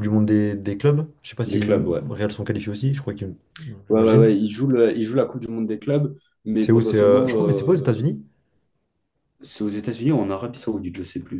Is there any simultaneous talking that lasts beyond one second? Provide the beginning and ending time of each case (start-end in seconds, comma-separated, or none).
6.6-8.2